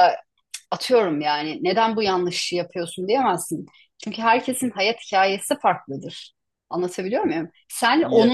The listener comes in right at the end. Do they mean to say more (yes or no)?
no